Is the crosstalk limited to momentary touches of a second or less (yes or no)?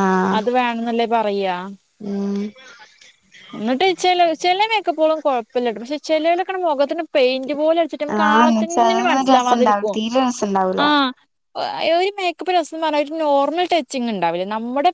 no